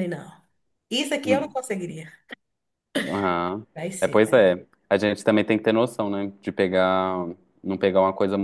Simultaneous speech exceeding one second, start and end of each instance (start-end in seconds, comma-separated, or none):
none